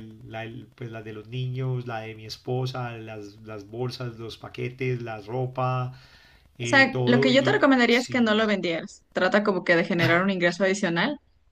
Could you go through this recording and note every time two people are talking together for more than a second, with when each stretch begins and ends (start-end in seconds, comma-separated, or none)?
6.6-8.4